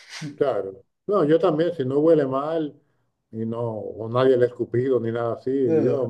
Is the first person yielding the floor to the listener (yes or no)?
no